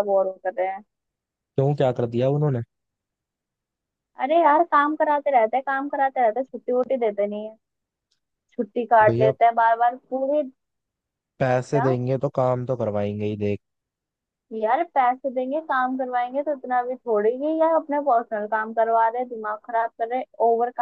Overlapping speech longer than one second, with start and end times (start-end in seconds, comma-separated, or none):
none